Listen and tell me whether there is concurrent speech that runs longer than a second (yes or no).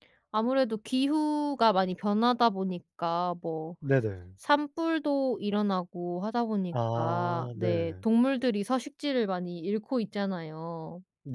yes